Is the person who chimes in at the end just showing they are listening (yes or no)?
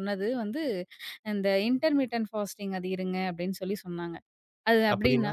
yes